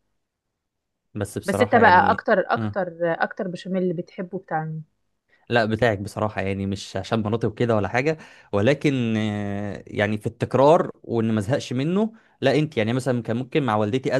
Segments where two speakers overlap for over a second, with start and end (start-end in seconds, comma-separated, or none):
1.4-2.8